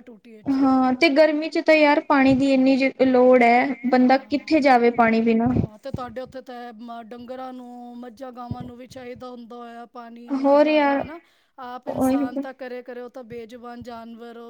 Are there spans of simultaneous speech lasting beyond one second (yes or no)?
no